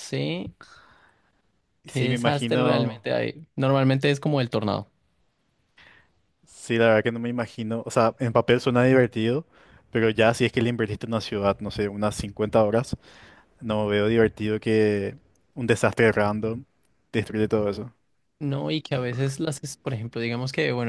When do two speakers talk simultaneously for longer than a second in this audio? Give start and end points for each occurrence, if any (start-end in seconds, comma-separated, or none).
1.8-3.1